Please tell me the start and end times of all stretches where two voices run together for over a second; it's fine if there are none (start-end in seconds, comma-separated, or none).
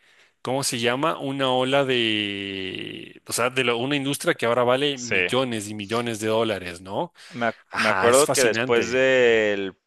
7.7-9.0